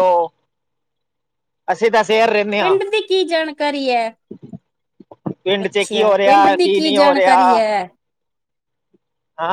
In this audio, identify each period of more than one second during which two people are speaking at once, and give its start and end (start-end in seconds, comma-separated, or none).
5.6-7.4